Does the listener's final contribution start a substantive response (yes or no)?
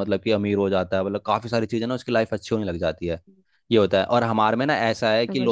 no